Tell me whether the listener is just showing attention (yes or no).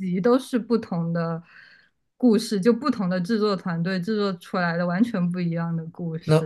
no